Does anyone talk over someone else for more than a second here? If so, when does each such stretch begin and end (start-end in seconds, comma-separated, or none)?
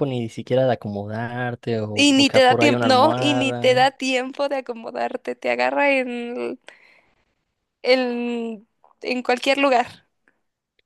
1.9-3.8